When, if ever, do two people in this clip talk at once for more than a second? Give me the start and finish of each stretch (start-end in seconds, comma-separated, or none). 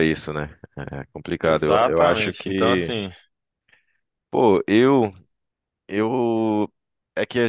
1.4-2.9